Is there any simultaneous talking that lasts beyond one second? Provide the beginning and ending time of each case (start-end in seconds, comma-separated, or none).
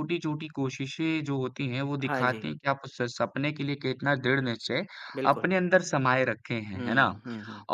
none